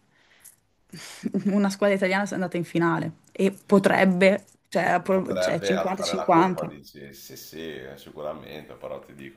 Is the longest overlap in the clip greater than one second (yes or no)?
yes